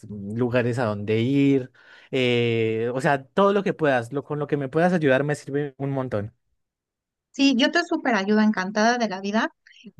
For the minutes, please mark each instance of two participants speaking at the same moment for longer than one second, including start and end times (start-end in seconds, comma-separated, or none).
none